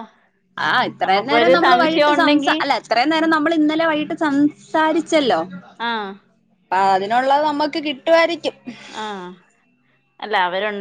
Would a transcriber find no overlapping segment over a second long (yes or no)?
no